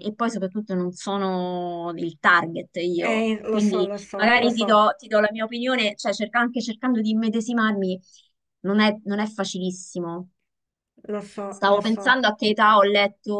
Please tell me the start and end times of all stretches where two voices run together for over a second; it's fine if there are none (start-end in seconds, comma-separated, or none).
3.0-4.7